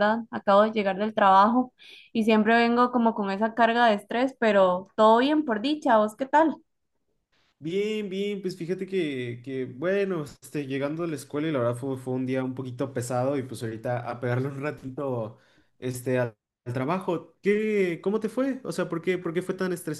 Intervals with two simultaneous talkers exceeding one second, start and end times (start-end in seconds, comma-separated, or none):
none